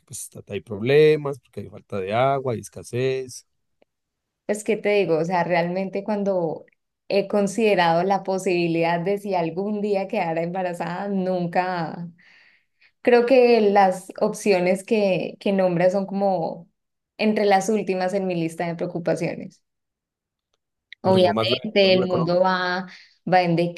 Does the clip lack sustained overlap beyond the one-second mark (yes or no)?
no